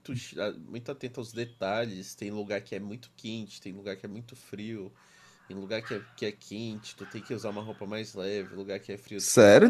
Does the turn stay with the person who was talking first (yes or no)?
no